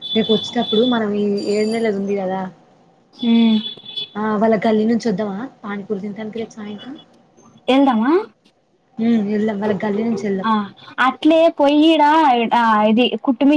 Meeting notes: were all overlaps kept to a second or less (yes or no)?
yes